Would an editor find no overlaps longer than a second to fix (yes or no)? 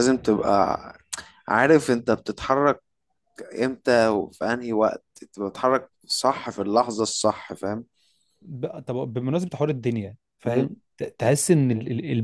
yes